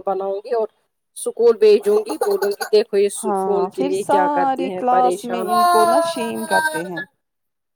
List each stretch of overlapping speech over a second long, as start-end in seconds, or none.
3.2-5.4